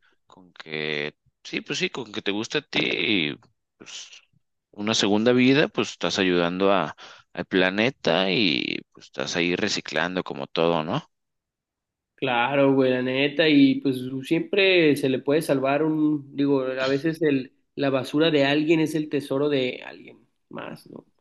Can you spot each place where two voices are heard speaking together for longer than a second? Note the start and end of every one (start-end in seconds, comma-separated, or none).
none